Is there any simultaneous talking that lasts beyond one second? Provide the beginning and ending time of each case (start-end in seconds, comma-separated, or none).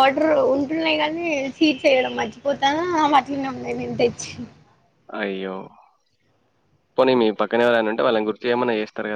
none